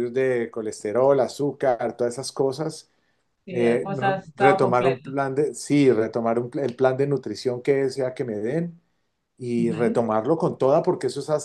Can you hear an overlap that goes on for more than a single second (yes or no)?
yes